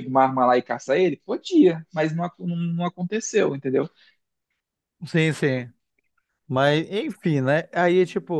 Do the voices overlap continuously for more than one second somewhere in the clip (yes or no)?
no